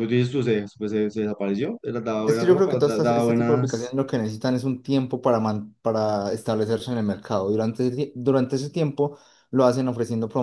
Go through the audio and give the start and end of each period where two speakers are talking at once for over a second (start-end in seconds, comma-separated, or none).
2.2-3.9